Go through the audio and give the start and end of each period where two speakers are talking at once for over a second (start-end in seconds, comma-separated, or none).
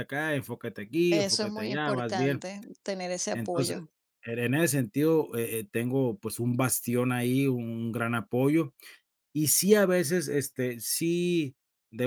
1.1-2.4